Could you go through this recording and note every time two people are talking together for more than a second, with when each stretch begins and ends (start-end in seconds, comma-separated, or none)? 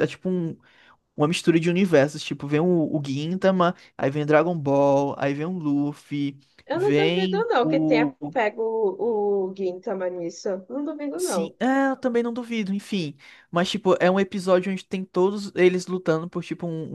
6.7-8.4